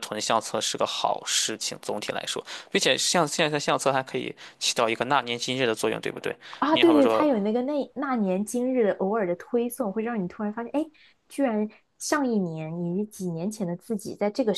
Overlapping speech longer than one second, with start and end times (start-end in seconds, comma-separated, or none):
none